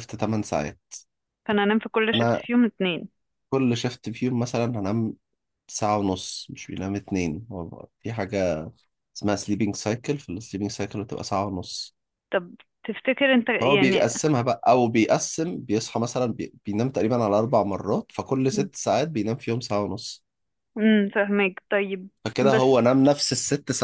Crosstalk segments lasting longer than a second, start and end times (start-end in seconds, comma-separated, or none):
none